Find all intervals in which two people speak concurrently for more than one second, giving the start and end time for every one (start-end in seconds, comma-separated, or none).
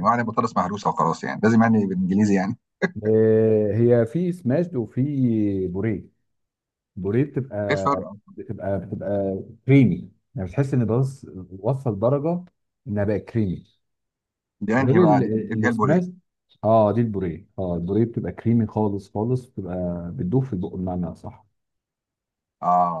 14.8-16.0